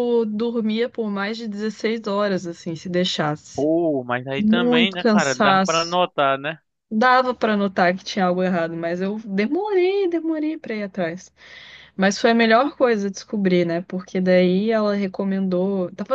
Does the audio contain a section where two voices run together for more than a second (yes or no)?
yes